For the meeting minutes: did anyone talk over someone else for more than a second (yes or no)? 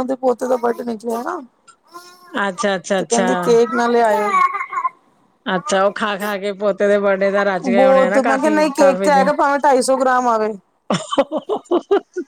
yes